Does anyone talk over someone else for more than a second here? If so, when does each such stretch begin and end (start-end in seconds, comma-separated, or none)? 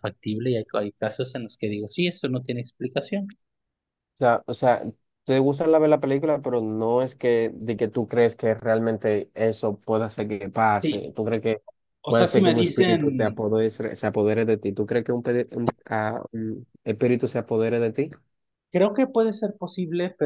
12.1-13.4